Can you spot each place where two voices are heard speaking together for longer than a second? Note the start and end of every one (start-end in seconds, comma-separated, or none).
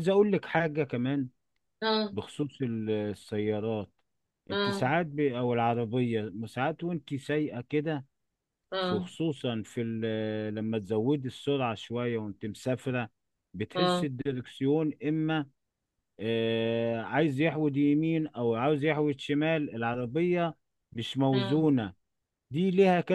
none